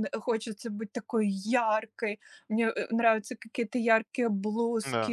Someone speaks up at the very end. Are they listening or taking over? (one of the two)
listening